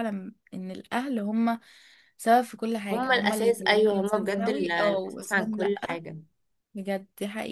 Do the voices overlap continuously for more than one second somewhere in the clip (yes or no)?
yes